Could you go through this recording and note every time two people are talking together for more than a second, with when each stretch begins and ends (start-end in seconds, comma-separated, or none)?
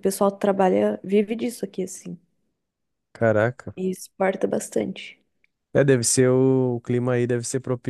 none